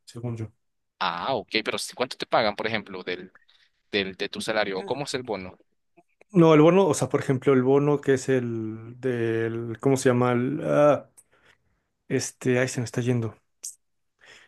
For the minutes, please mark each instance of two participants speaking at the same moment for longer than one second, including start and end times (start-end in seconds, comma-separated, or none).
none